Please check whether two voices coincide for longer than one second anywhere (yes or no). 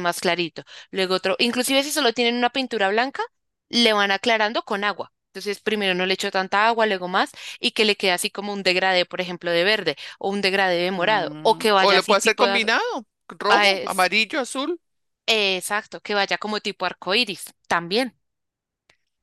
yes